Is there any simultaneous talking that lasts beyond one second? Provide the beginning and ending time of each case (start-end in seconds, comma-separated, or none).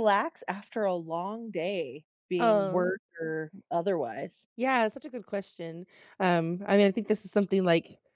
none